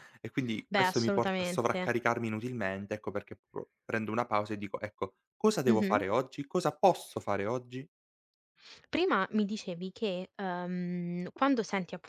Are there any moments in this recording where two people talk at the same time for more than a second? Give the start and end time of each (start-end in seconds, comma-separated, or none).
0.7-1.9